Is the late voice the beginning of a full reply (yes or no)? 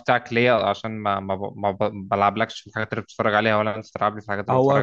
yes